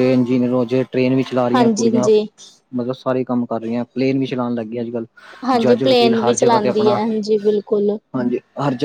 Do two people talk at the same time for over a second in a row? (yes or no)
yes